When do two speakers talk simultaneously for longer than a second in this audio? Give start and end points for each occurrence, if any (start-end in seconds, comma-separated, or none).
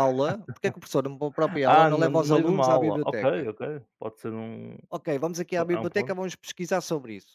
1.4-3.5